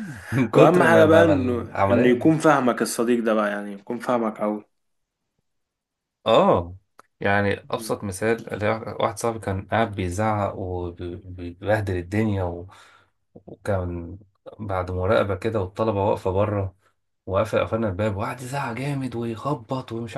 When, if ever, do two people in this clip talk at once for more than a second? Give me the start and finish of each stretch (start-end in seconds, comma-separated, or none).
0.5-2.4